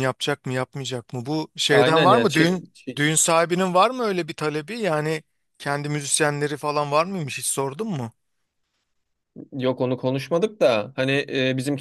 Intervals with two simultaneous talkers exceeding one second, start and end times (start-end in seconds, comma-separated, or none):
1.7-3.1